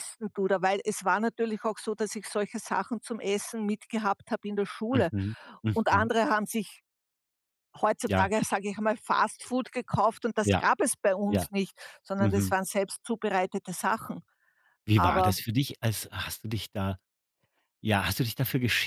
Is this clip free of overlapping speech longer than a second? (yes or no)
yes